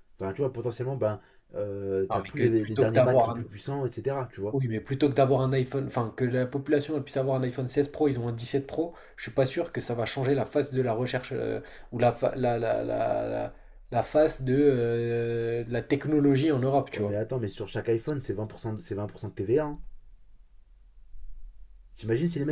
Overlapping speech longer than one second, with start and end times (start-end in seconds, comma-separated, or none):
2.1-3.4